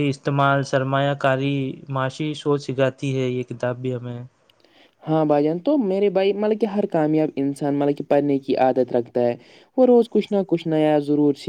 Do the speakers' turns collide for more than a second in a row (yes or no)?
no